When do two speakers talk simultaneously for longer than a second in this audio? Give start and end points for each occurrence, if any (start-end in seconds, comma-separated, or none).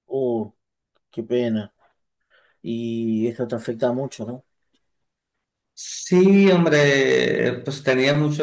none